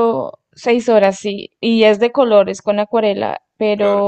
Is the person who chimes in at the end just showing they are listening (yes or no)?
yes